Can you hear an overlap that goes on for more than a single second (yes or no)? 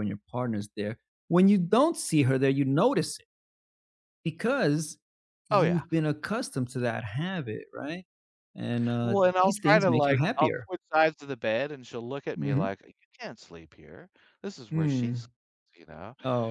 yes